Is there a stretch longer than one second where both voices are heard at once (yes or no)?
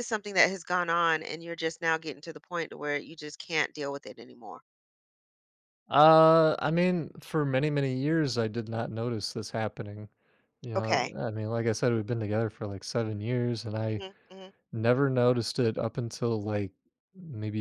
no